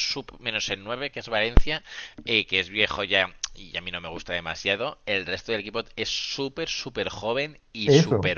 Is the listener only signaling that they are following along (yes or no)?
yes